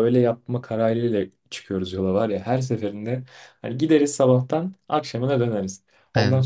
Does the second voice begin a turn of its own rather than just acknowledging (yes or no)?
no